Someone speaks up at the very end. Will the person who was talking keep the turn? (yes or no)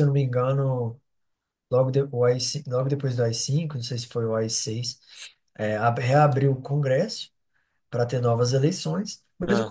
yes